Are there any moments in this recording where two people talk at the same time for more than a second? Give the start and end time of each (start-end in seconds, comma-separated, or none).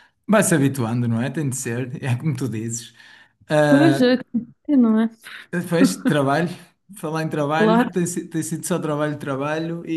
none